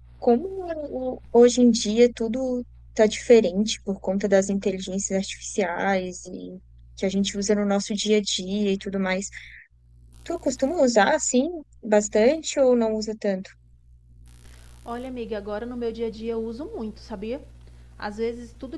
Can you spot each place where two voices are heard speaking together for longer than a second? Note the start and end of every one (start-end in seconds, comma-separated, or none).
none